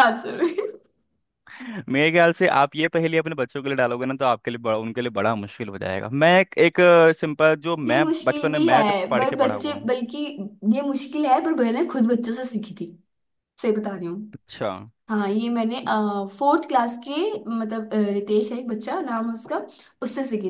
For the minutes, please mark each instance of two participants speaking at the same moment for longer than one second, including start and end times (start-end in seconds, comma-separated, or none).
7.9-9.9